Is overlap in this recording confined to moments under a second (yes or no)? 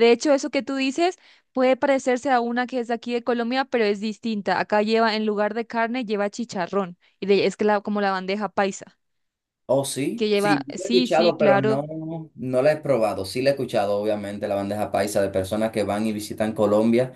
no